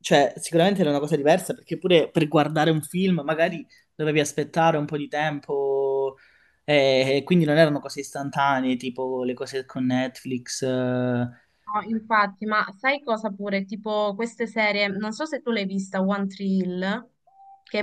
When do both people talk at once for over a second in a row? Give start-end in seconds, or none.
none